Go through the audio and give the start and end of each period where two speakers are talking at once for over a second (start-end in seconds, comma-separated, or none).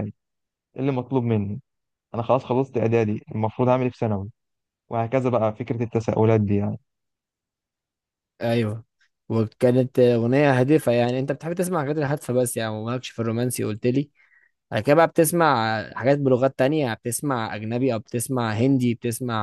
none